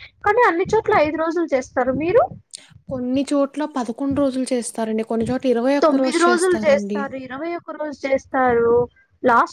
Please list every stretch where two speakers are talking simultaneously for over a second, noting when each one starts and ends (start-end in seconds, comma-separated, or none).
none